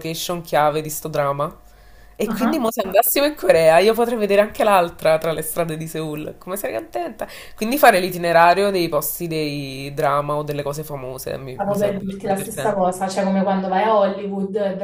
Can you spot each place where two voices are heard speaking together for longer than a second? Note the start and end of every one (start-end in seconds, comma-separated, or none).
11.5-13.0